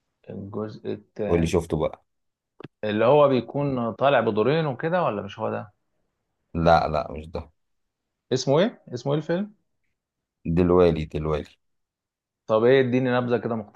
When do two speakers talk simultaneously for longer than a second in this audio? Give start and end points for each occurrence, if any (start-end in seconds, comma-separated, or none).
none